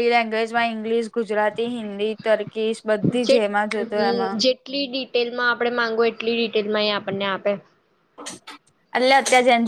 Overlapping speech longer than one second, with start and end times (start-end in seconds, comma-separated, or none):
none